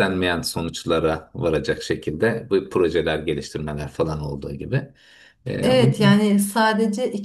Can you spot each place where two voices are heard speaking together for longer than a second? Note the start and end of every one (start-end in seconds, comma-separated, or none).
none